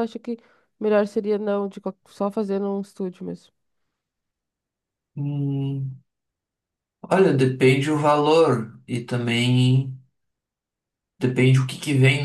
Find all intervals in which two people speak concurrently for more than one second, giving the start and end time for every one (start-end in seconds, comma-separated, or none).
none